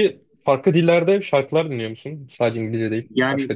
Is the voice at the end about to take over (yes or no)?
yes